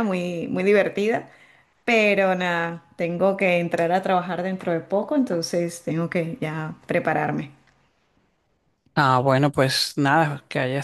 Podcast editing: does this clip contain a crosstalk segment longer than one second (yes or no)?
no